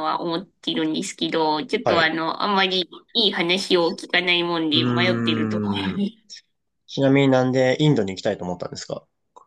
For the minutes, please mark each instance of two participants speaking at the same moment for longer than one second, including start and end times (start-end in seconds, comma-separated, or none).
4.7-6.0